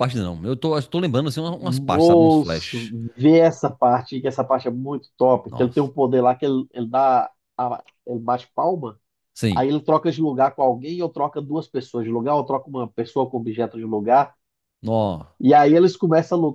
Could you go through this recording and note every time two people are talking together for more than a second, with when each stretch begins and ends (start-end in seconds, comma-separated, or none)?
1.6-2.9